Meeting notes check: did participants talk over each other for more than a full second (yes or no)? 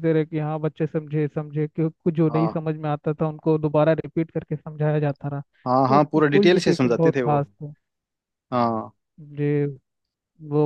yes